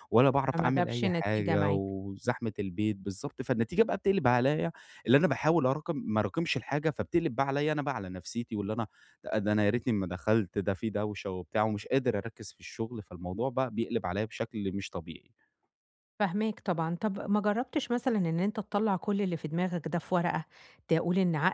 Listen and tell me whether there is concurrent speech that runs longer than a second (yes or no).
yes